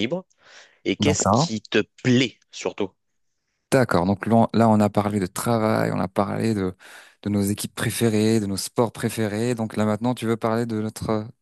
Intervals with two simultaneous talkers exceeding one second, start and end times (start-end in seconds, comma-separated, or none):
none